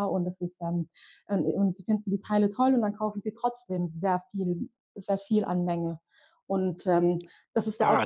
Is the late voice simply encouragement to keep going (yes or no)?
no